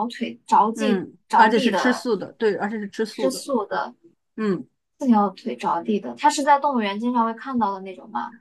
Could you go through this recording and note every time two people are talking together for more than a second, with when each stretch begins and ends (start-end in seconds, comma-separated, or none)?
0.8-2.1